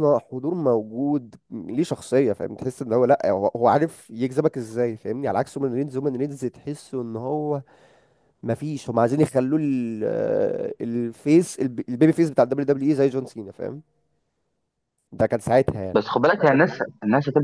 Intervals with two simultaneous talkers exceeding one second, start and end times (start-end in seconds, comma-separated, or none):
none